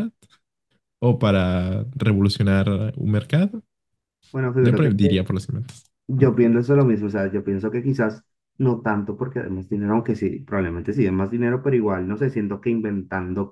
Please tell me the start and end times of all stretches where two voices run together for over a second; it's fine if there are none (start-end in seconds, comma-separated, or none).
none